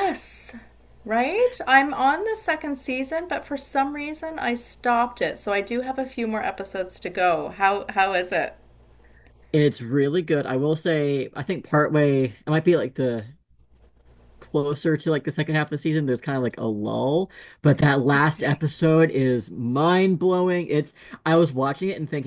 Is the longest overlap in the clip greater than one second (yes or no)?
no